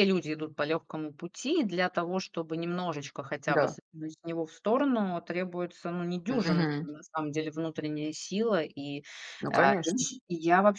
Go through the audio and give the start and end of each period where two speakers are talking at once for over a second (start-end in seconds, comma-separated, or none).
none